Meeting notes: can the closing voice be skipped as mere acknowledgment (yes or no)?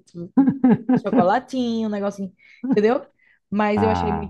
yes